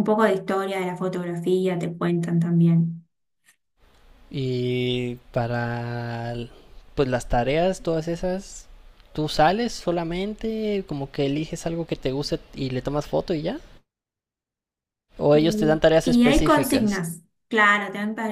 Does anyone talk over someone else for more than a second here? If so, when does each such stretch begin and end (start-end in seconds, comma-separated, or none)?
15.3-16.9